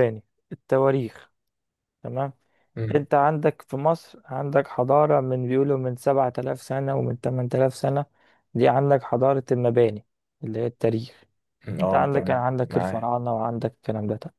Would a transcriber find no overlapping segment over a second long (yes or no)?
no